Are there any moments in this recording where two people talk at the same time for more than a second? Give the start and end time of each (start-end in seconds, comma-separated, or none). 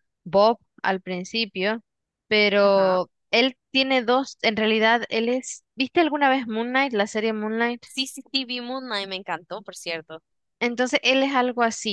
none